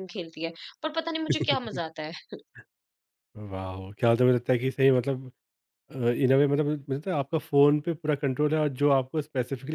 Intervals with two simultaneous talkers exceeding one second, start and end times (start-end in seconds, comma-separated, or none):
none